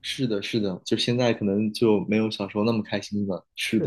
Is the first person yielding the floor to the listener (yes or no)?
yes